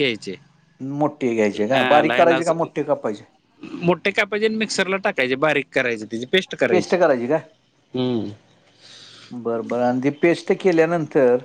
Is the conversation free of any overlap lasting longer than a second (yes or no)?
yes